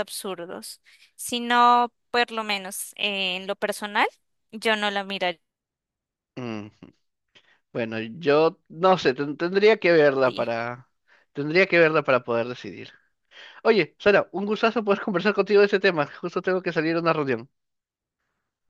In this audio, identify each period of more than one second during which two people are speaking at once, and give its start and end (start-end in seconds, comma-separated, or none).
none